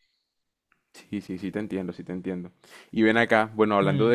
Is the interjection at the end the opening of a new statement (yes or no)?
no